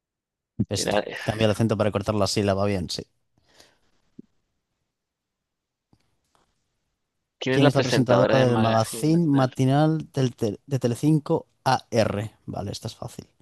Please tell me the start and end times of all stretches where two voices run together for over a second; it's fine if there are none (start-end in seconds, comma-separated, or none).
7.5-9.6